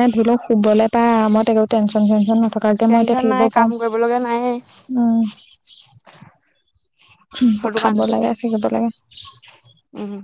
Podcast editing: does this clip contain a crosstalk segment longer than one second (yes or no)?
yes